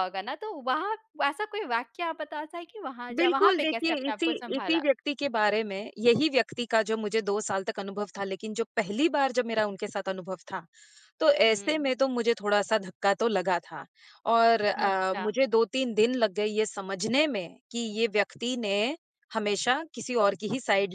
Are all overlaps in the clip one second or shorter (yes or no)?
no